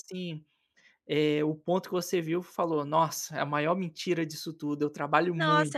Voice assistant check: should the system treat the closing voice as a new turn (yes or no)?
yes